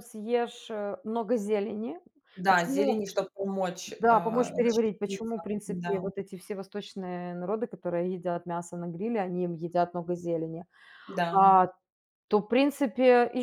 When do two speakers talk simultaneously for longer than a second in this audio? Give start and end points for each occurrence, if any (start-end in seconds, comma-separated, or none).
4.0-6.0